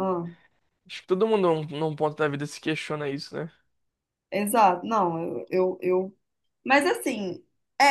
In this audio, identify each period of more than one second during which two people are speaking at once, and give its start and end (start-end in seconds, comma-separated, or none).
none